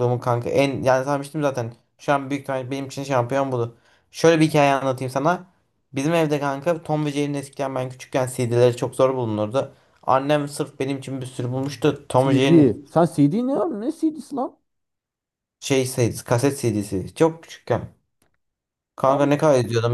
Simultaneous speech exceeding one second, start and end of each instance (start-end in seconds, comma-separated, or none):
none